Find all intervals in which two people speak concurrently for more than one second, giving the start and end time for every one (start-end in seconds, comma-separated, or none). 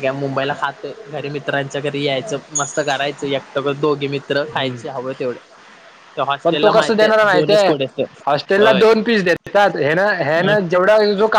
6.4-7.7